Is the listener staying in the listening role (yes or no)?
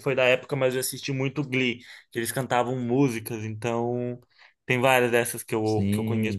no